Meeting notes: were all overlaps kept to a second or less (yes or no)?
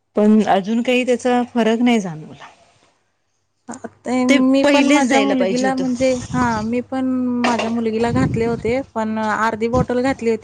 no